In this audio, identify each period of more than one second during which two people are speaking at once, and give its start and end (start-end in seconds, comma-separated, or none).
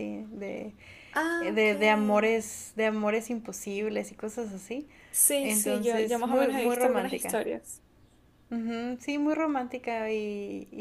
5.4-7.4